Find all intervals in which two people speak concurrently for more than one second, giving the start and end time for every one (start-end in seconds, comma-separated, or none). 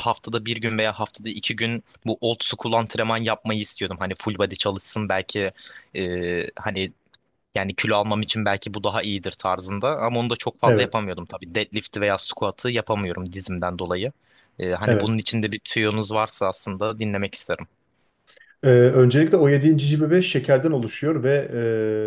none